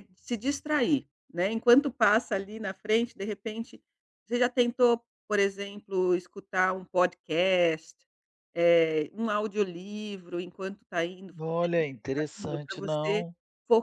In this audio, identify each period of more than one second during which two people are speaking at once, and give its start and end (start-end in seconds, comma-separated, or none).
11.4-13.2